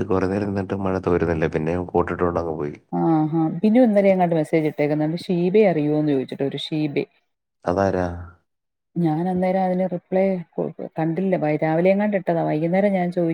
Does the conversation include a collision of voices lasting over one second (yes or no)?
no